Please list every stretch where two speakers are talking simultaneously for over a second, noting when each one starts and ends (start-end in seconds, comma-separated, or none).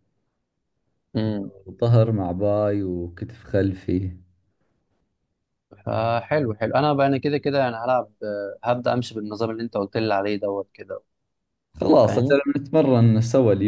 none